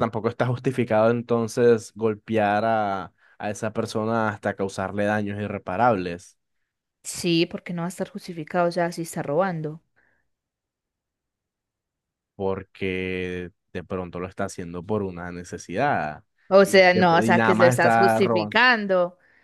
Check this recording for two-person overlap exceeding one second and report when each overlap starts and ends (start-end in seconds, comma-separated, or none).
16.6-18.6